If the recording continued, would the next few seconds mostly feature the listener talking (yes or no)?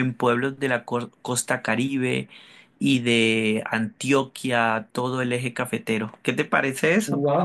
yes